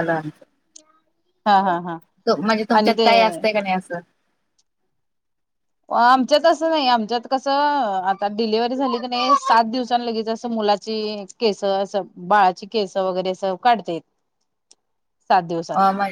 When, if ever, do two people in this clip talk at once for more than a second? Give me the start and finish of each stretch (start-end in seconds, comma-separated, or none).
none